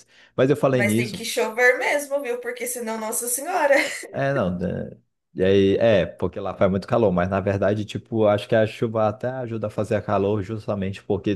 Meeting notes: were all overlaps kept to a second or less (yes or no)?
yes